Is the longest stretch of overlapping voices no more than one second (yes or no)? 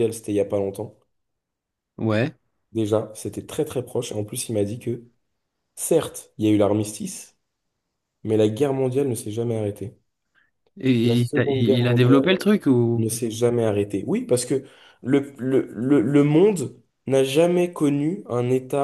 no